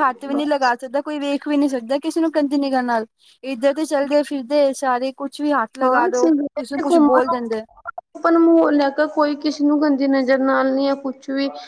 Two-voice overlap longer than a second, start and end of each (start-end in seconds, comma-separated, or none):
none